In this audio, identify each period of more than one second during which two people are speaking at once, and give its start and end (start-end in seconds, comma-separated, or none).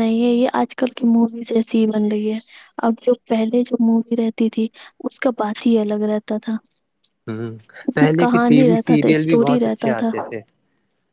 8.0-10.1